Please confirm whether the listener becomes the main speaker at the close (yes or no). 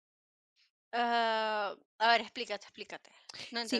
yes